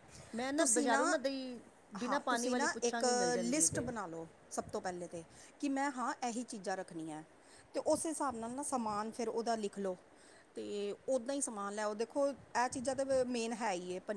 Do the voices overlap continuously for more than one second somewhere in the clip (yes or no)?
yes